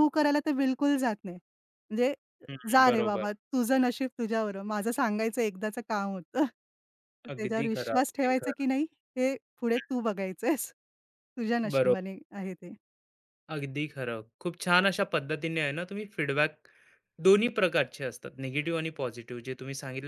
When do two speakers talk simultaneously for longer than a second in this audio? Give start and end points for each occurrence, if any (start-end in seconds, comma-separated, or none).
7.3-8.6